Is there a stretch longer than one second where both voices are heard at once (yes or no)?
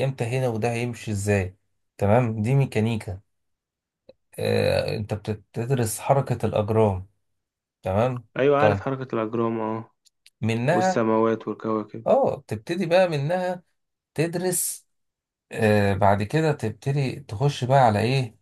no